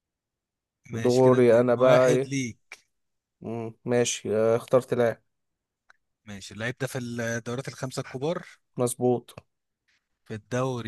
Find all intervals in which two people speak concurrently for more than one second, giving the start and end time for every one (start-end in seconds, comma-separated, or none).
0.9-2.3